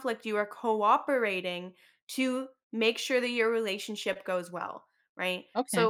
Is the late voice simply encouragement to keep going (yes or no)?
yes